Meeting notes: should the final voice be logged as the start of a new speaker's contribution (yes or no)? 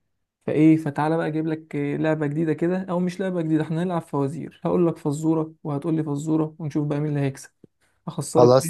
yes